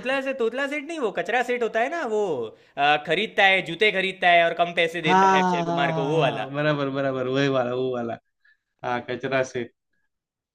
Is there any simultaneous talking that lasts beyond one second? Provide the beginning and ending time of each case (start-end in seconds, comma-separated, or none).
5.1-6.5